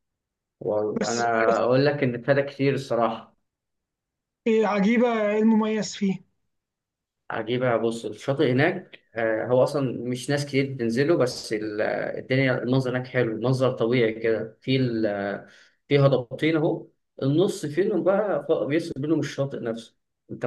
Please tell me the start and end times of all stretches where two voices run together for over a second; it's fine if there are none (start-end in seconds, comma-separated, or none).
none